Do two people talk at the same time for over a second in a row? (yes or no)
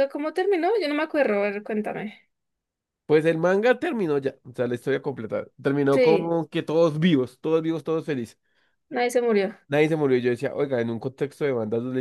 no